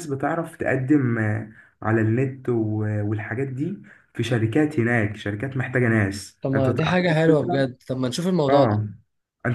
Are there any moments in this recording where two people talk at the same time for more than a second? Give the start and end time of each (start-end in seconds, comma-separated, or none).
6.4-7.7